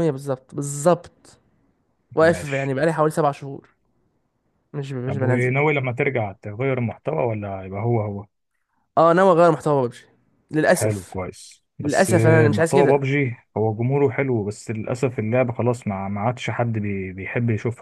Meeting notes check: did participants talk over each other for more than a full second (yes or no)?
yes